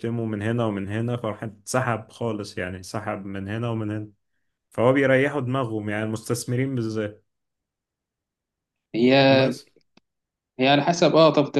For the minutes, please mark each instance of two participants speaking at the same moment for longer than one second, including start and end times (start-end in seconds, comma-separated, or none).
none